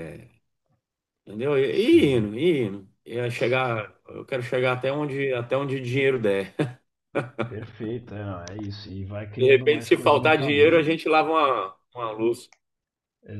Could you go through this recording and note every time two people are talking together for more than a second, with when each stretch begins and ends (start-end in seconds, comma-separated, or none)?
9.4-10.9